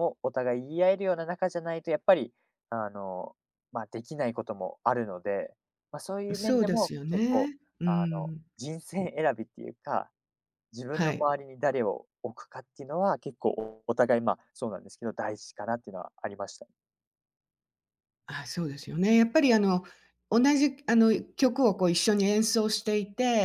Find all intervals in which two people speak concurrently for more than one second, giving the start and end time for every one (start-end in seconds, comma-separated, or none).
6.3-8.4